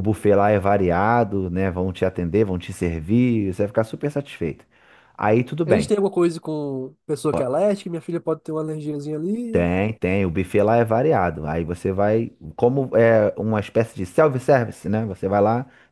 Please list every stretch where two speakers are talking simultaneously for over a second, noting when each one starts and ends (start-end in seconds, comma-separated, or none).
none